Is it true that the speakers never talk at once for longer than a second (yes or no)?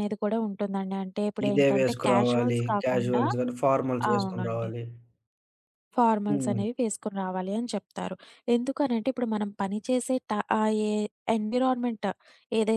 no